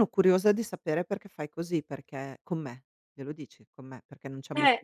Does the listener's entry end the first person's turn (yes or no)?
yes